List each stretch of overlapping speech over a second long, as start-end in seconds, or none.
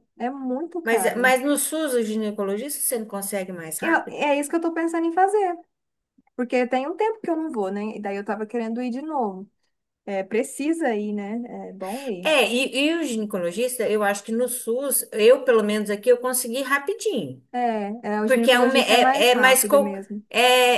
18.2-19.9